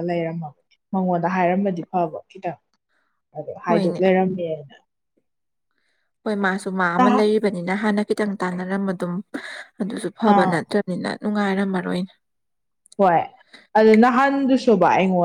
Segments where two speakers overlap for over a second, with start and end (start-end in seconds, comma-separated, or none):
none